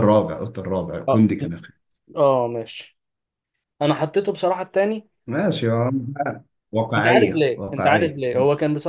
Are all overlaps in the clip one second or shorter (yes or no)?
no